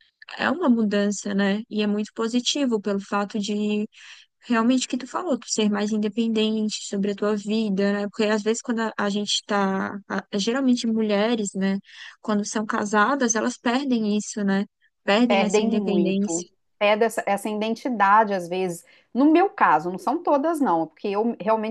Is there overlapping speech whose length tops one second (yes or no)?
yes